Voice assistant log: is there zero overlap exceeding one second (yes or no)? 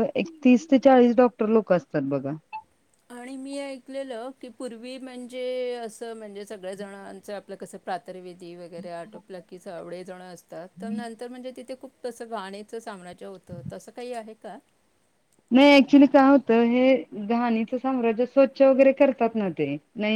yes